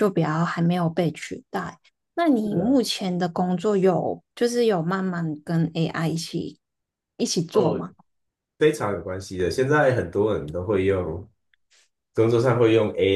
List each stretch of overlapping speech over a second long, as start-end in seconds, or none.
none